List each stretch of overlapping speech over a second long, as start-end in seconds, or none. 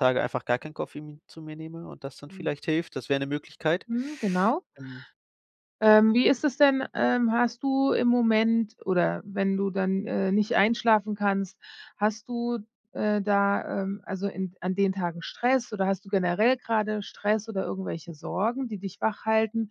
none